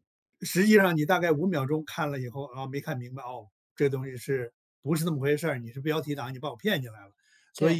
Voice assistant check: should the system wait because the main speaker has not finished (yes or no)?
no